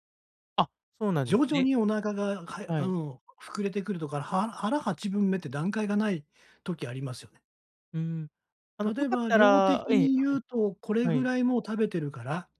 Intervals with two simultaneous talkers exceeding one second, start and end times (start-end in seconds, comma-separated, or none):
8.9-10.4